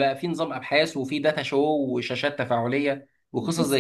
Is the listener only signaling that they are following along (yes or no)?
yes